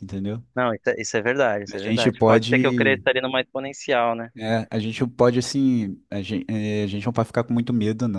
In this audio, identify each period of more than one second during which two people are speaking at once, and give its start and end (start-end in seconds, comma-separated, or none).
1.7-3.0